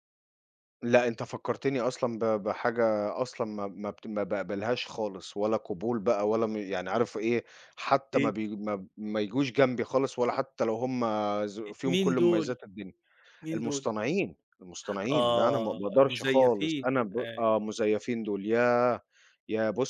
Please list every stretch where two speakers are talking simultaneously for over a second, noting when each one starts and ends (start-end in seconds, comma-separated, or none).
15.1-17.4